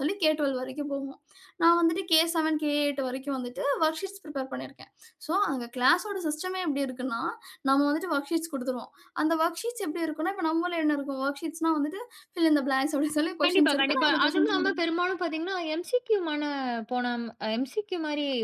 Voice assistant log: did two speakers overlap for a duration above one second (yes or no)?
yes